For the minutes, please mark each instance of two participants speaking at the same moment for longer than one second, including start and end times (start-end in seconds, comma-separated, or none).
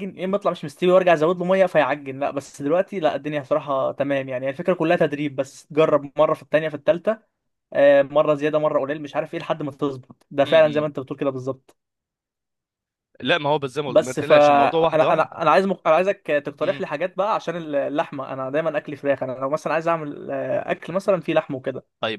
13.9-15.2